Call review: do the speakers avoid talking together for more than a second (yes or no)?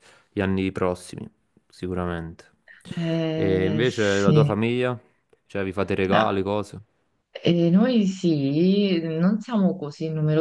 no